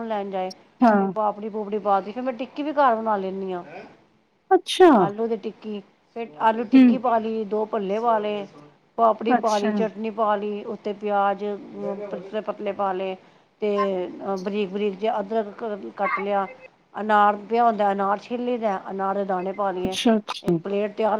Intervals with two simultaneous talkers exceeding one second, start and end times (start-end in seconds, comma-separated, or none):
none